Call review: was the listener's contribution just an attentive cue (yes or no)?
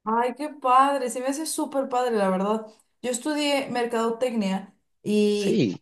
yes